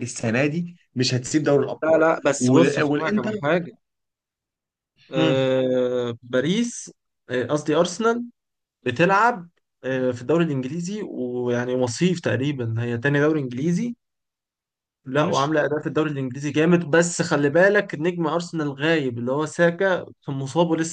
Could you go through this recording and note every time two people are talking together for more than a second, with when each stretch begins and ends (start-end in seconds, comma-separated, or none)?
1.8-3.4